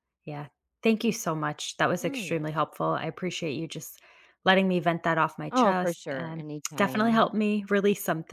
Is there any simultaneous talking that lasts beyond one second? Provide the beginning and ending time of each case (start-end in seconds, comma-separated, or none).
5.5-7.3